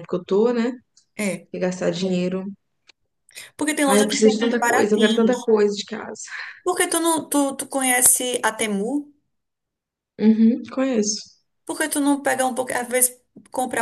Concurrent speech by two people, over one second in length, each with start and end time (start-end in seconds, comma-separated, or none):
3.9-5.5